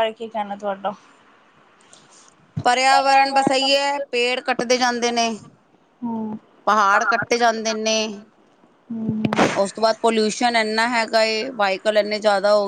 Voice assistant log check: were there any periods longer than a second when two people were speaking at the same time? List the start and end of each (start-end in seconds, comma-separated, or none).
none